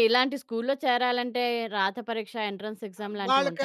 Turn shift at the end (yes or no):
yes